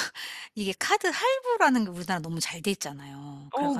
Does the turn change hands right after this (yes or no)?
yes